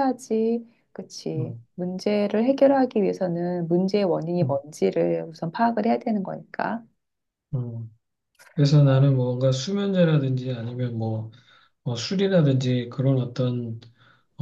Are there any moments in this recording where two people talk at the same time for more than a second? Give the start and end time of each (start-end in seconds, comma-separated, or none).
none